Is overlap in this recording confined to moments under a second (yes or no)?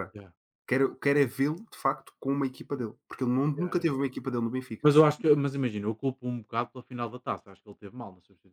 yes